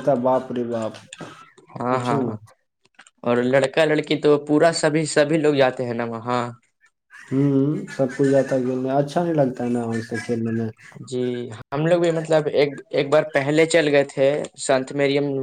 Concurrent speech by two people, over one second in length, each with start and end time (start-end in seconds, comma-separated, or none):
none